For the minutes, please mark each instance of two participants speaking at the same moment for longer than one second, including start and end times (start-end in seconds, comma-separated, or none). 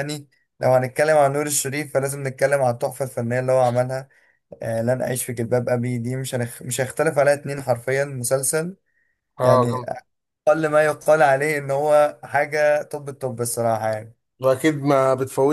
none